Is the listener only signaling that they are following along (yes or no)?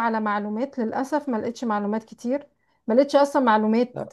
yes